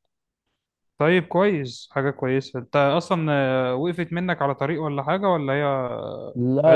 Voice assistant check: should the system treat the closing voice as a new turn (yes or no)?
yes